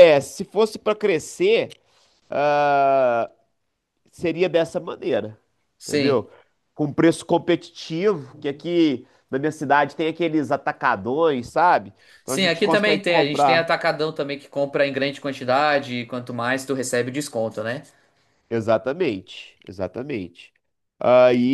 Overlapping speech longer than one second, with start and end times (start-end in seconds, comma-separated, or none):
12.2-13.7